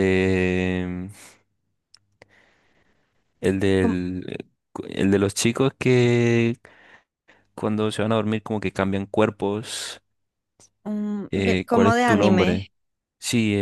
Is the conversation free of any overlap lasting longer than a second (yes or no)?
no